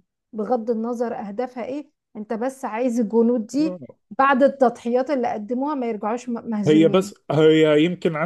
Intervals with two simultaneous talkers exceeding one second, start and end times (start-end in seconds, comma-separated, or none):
none